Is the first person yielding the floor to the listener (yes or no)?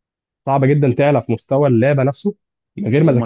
yes